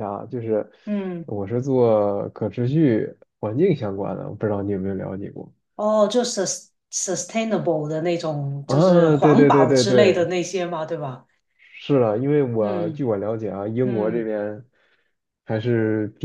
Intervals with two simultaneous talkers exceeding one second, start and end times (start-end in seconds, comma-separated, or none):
8.7-10.3